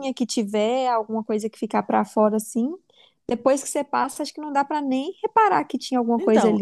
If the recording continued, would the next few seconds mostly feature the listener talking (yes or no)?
yes